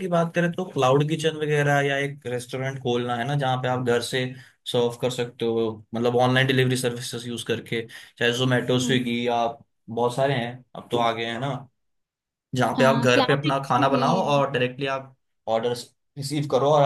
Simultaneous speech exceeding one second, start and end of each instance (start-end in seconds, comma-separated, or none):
12.8-14.3